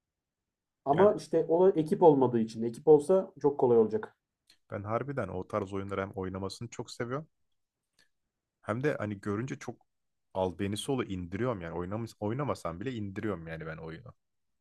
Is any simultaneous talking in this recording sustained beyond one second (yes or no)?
no